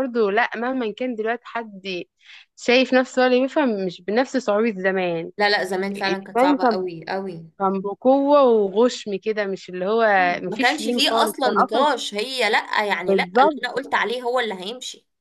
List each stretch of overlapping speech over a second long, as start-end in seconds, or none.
10.4-11.9